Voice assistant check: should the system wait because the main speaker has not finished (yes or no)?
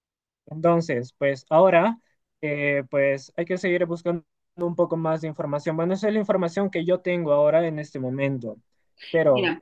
no